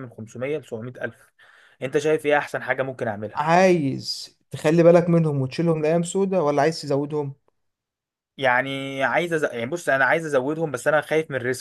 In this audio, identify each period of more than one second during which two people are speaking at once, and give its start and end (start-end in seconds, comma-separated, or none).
none